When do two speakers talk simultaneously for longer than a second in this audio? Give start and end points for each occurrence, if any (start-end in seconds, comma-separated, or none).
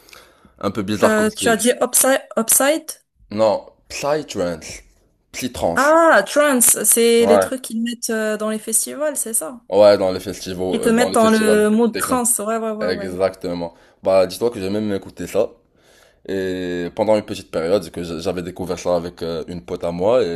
10.7-12.2